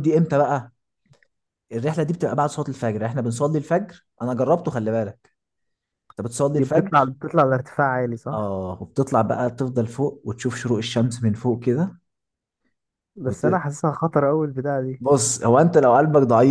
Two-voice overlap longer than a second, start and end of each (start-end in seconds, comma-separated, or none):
none